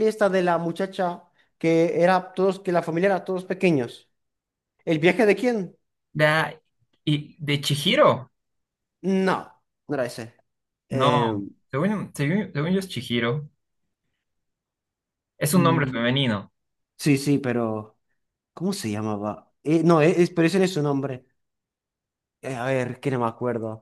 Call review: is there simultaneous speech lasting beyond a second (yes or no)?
no